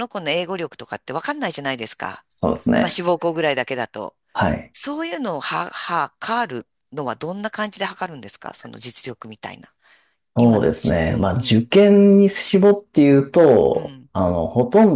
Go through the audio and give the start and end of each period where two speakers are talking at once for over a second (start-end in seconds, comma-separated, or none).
10.4-11.6